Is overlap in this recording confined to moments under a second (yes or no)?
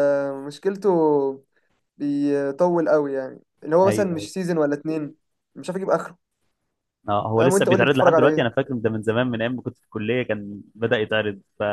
no